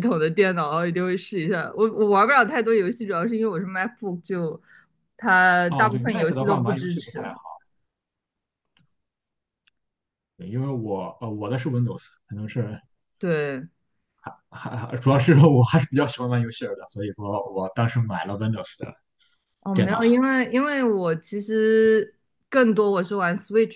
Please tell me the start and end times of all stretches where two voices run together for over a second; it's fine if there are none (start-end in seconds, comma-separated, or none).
5.7-7.2